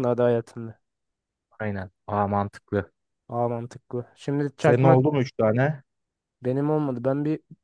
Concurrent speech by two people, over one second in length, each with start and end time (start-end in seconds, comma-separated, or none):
none